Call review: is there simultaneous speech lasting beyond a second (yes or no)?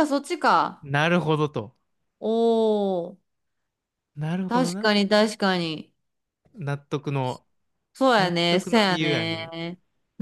yes